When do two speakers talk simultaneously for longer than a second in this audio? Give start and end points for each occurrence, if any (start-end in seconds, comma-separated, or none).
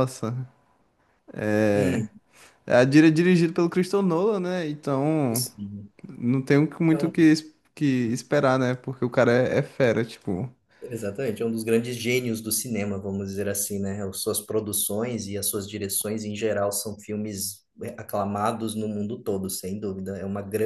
none